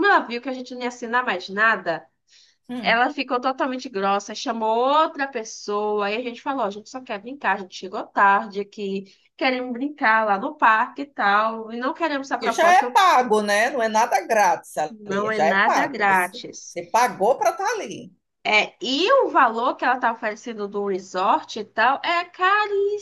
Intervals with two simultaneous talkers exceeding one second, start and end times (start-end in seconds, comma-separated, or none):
14.9-16.8